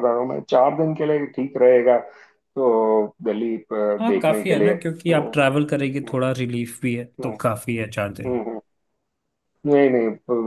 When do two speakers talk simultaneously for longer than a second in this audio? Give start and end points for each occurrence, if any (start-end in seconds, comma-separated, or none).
4.0-6.1